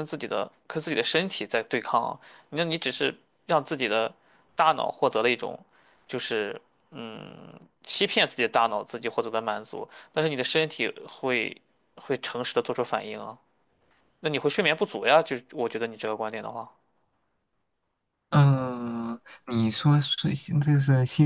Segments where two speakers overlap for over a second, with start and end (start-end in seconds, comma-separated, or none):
none